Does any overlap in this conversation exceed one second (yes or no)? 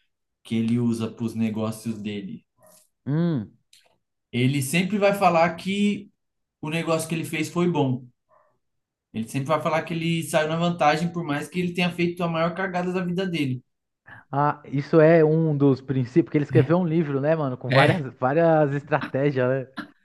no